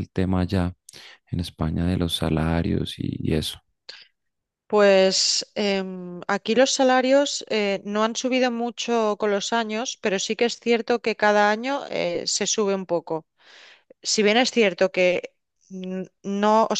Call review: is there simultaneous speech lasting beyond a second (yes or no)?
no